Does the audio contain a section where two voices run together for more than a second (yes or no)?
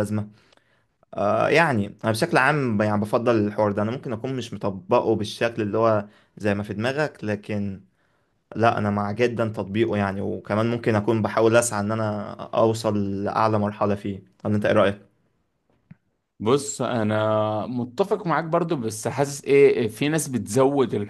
no